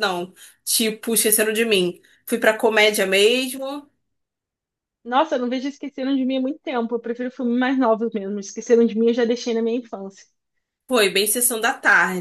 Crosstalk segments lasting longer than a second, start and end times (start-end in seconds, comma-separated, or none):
none